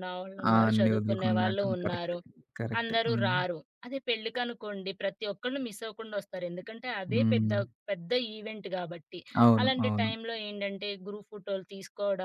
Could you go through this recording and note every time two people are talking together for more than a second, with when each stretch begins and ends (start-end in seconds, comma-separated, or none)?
0.5-2.2